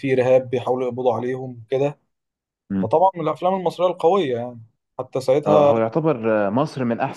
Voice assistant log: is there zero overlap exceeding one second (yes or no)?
yes